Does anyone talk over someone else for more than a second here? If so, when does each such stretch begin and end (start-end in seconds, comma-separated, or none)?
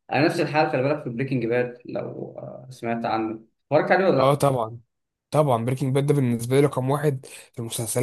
none